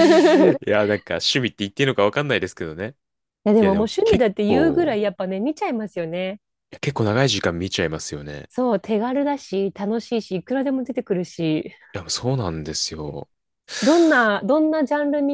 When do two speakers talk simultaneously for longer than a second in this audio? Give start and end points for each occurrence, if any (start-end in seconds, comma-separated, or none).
3.6-5.0